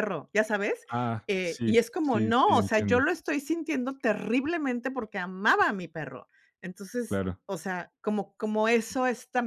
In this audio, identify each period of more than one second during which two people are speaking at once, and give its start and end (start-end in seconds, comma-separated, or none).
1.3-3.0